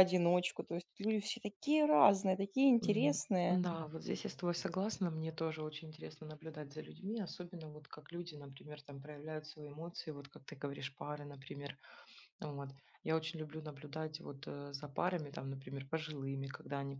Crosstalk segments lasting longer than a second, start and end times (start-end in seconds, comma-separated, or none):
none